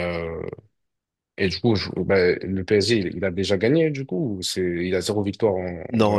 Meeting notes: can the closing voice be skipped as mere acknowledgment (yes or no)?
no